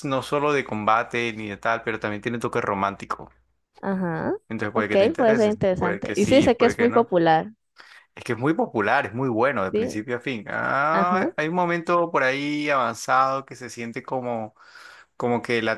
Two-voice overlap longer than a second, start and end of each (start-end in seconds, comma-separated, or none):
4.8-7.1